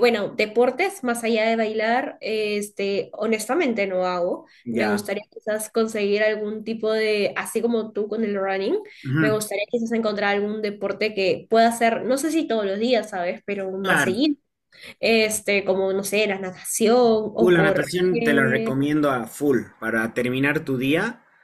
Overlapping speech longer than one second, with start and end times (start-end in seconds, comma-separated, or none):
17.4-18.7